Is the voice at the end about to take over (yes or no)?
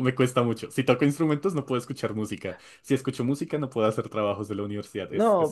yes